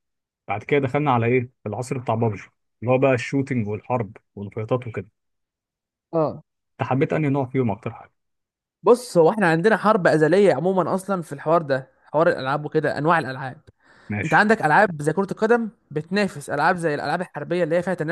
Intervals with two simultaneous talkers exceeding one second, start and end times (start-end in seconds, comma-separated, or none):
none